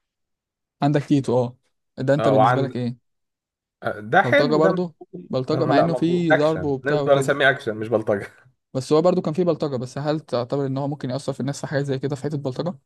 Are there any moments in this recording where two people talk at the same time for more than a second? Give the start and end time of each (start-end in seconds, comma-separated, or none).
4.2-7.4